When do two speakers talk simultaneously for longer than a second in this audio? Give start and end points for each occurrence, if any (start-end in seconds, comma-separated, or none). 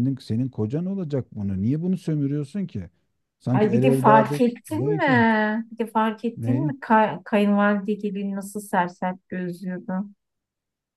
3.5-5.2